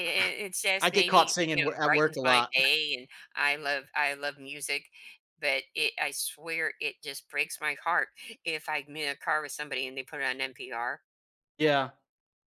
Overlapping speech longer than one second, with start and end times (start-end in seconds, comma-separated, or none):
0.8-2.5